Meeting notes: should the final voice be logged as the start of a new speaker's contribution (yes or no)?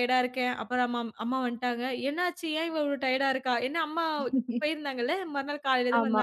no